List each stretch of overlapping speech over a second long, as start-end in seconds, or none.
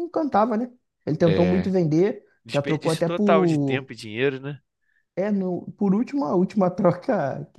2.4-3.9